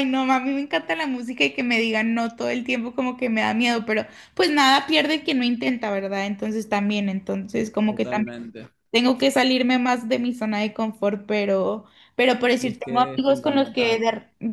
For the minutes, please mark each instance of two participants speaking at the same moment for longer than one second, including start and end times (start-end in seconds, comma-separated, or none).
12.6-14.0